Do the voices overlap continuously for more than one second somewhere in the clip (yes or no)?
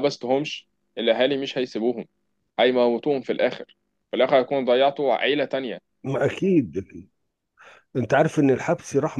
no